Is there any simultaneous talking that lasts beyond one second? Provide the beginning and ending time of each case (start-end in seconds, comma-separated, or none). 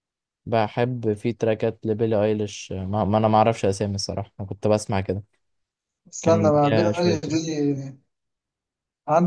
6.2-7.4